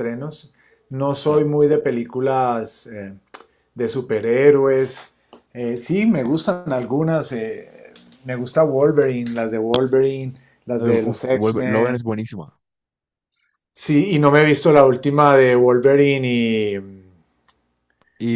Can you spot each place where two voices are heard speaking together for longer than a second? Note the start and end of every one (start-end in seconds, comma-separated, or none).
10.8-12.1